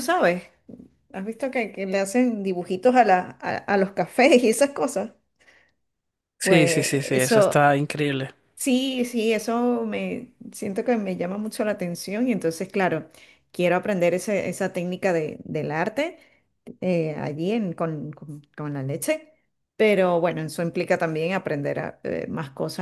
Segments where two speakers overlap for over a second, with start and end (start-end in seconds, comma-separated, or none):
6.4-7.7